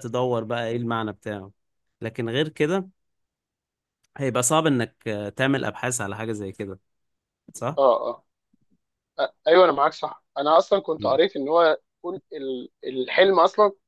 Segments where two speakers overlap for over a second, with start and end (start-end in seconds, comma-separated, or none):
none